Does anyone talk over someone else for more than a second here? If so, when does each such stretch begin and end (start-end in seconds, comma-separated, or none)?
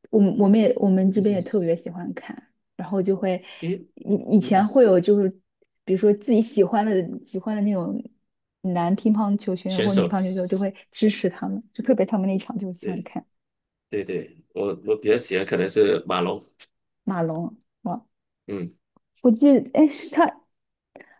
none